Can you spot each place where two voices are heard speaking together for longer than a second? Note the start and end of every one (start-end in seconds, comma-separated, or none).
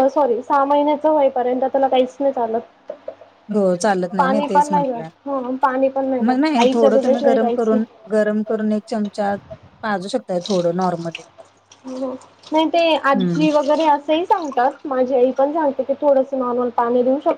6.3-7.8